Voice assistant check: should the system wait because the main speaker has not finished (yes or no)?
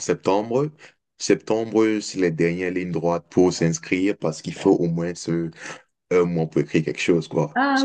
no